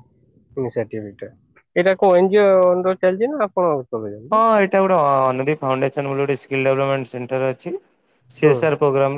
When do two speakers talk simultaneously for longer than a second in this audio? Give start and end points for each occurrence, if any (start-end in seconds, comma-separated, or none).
none